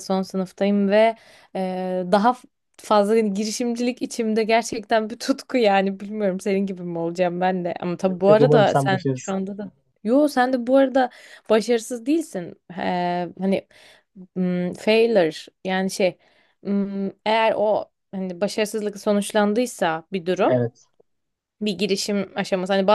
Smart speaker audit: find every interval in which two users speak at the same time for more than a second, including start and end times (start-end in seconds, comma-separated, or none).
8.1-9.4